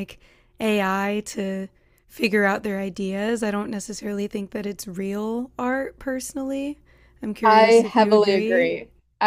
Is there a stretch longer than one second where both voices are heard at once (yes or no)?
yes